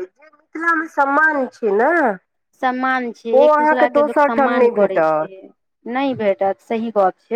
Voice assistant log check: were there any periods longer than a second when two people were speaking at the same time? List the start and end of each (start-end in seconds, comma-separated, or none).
3.4-5.3